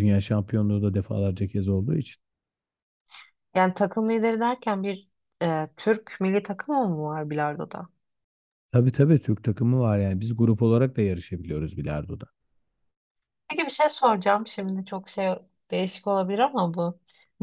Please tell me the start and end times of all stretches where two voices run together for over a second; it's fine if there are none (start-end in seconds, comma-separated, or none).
none